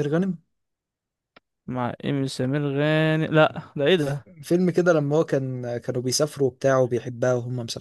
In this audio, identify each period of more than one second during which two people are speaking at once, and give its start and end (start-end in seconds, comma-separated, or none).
none